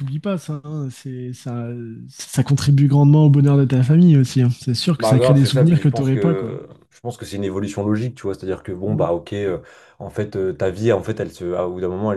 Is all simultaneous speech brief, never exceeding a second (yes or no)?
no